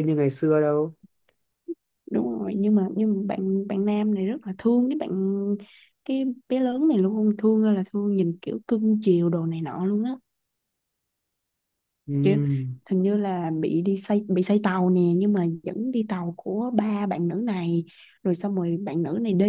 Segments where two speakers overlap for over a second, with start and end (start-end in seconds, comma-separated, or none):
none